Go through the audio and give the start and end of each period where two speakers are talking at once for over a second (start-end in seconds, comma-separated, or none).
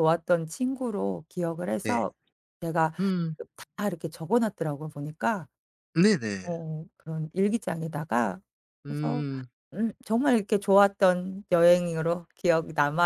none